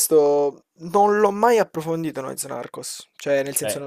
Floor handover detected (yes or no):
no